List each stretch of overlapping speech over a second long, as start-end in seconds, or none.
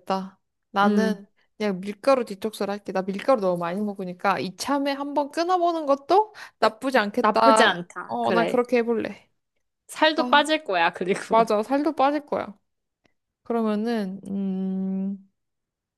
7.2-8.6